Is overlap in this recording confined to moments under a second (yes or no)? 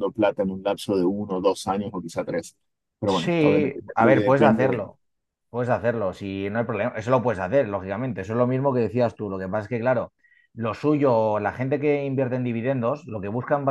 no